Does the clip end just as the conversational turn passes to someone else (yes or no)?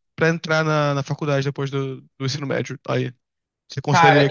yes